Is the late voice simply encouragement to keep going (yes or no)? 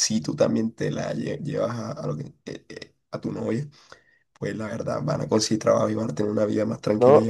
no